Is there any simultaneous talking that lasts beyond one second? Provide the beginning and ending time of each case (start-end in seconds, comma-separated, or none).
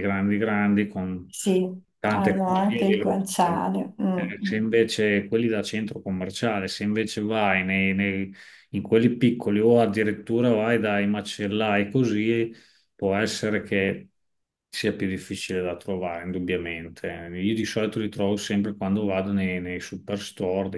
2.1-3.7